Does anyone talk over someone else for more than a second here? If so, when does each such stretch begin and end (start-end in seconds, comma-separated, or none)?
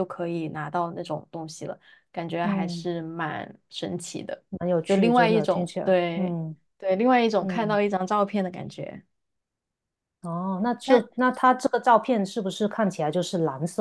4.8-6.3